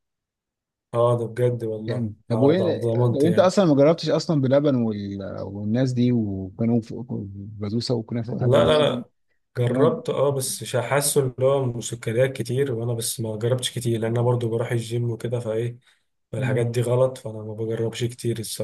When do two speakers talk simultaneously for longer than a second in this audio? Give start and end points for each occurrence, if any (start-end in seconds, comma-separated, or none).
1.8-3.5